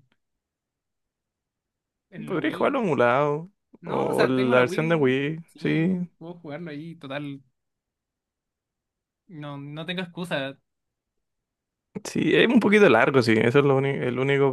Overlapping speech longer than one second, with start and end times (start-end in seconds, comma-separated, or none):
3.8-6.1